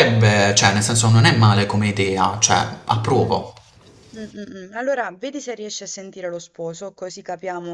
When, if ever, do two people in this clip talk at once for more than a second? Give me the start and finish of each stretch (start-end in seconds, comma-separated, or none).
none